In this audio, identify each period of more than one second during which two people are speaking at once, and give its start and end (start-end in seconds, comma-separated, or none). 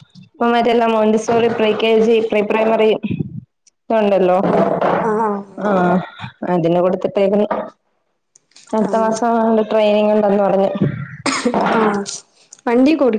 none